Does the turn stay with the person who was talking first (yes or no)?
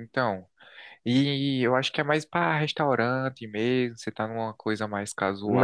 no